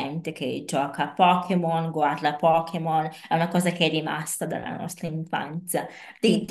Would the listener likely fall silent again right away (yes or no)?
yes